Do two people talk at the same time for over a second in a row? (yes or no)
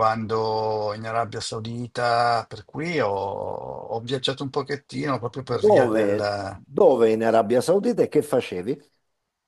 yes